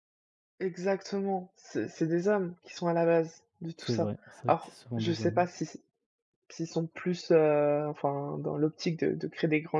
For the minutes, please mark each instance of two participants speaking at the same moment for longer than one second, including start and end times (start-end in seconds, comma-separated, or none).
3.8-5.6